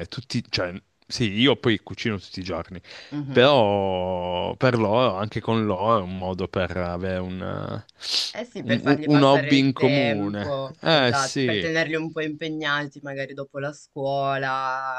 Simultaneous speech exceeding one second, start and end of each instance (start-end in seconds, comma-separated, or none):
8.6-11.7